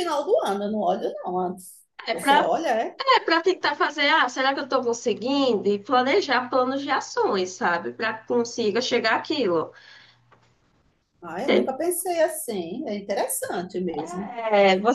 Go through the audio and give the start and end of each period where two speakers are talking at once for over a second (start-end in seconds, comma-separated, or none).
none